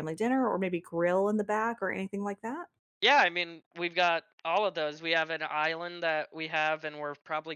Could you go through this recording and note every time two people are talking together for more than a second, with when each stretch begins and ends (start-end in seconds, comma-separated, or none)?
none